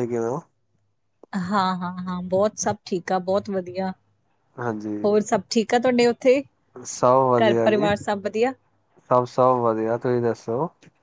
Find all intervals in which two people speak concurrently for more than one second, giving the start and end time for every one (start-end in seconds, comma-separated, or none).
none